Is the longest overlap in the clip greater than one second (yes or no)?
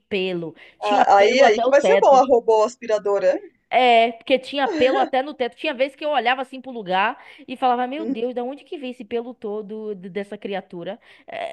yes